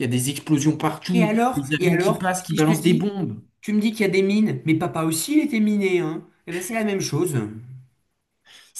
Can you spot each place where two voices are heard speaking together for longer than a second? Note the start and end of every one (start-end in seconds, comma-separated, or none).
1.1-3.1